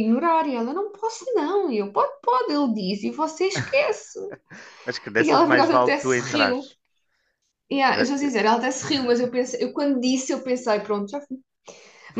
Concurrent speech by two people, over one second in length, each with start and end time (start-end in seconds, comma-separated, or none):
5.2-6.7